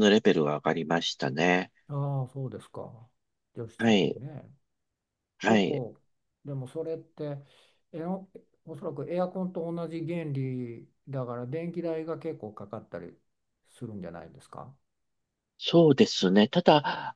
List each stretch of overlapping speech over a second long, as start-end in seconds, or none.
none